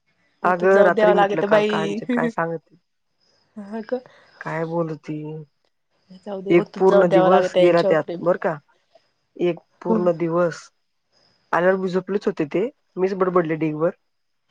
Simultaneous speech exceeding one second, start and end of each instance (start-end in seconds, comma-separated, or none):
0.5-2.0, 6.6-8.2